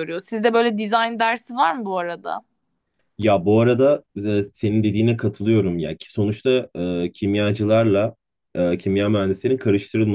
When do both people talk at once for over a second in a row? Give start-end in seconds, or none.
none